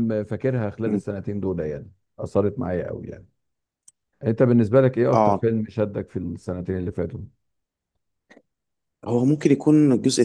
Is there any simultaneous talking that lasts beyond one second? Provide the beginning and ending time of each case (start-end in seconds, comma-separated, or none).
none